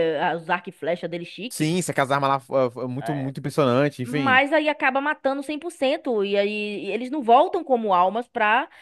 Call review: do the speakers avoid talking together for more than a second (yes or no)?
yes